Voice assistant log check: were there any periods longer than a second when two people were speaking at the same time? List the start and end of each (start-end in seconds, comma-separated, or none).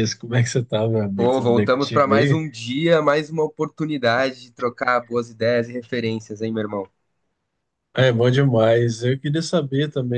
1.1-2.4